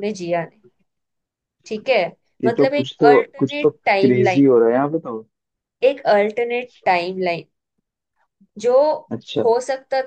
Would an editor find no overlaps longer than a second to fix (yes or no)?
no